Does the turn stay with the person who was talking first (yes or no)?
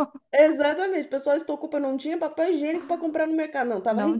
yes